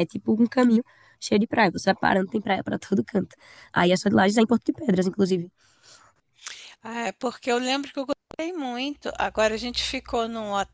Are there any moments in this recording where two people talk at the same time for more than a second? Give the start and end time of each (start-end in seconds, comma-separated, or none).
none